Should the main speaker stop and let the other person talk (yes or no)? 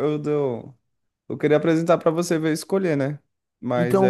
yes